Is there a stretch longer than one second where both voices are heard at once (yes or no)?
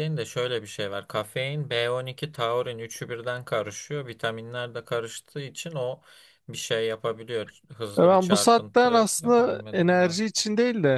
yes